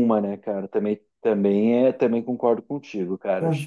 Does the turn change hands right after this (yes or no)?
yes